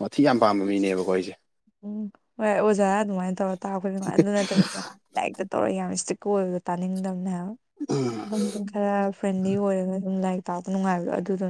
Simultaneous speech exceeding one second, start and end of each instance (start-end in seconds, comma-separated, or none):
none